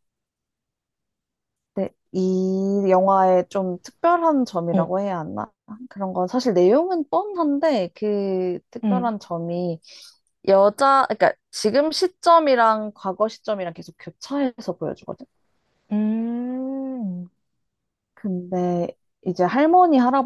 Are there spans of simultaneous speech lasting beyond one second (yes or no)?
no